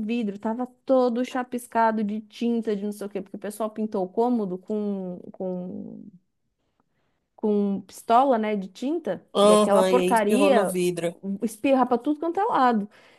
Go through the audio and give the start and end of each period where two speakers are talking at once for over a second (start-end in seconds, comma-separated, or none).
9.3-10.8